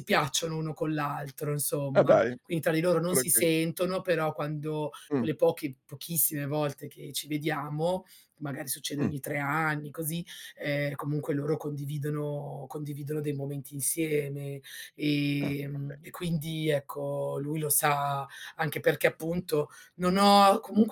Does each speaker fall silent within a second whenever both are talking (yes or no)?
yes